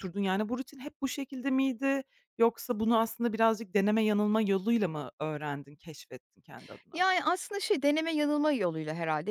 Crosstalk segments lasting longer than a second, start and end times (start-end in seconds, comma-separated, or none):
none